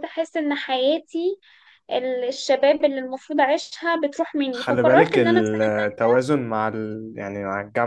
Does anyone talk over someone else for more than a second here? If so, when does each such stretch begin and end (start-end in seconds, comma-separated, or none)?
4.5-6.1